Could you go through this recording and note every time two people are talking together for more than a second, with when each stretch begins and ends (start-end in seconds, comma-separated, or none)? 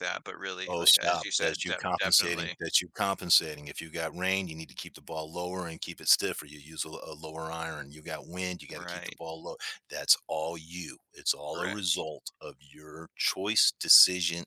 0.7-2.5